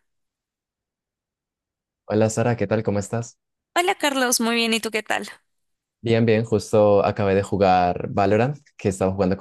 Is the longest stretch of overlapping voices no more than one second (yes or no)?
yes